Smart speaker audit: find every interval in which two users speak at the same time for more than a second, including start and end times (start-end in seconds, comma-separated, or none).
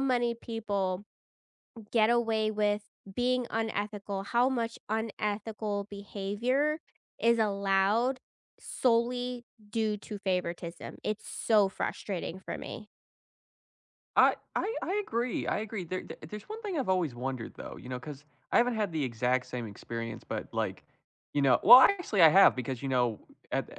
none